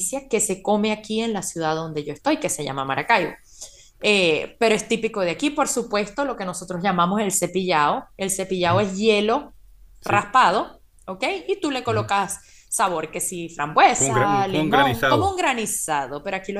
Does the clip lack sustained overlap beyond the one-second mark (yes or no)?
no